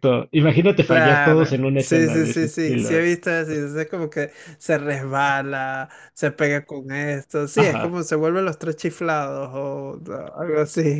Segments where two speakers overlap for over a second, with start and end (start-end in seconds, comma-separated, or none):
0.8-3.1